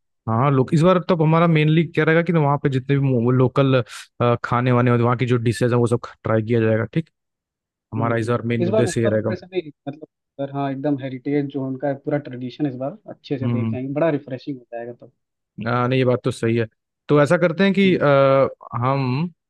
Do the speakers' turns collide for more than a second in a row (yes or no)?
yes